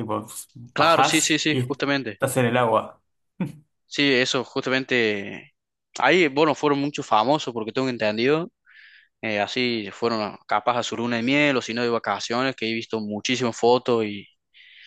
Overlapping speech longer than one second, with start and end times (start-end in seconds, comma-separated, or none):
0.7-2.2